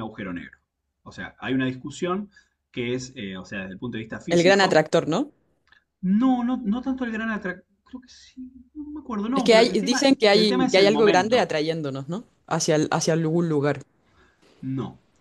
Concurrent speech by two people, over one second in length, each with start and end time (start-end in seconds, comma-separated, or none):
9.3-11.5